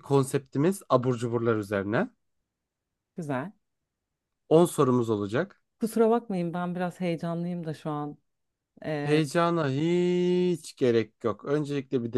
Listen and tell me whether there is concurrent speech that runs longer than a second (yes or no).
no